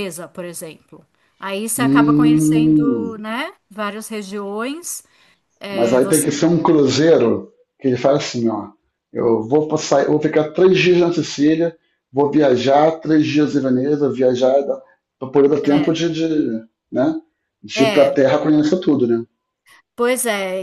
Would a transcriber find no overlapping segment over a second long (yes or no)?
no